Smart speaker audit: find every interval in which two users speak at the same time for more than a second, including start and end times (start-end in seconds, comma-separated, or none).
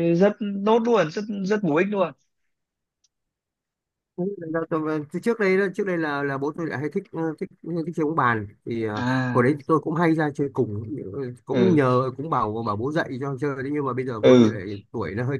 none